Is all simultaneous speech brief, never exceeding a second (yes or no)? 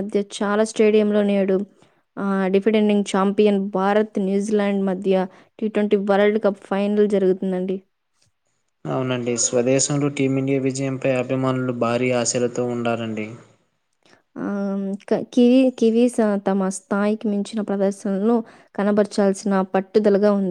yes